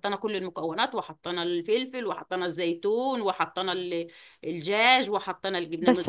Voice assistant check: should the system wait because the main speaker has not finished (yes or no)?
no